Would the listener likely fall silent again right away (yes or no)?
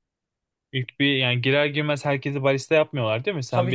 no